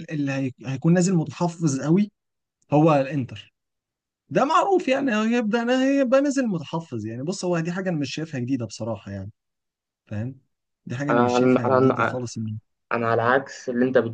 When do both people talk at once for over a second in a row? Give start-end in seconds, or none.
11.1-12.3